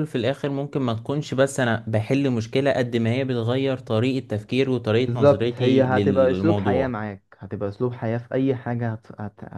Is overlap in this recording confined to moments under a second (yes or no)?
no